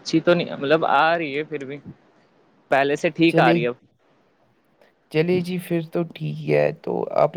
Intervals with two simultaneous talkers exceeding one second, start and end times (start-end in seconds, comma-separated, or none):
none